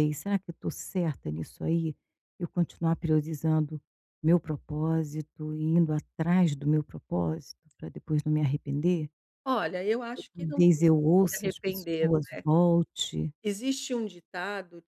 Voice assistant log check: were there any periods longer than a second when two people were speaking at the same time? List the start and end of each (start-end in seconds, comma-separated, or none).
10.3-12.1